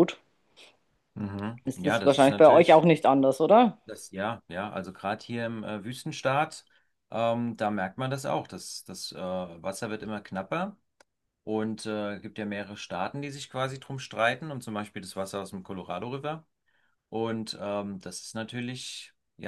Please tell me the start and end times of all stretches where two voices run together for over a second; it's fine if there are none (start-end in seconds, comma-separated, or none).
1.6-2.8